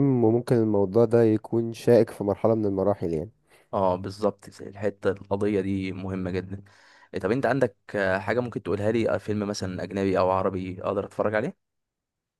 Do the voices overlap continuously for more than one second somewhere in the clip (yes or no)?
no